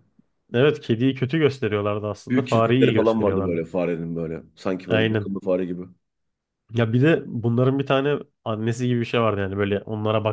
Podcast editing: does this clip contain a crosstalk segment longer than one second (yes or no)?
yes